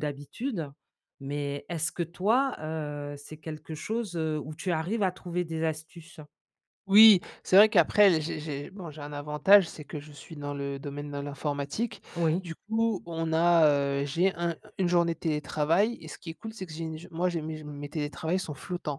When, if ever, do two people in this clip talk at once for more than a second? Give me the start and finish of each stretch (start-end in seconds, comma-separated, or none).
none